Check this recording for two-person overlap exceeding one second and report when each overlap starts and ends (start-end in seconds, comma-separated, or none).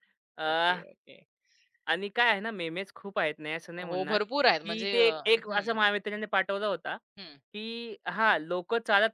3.8-5.8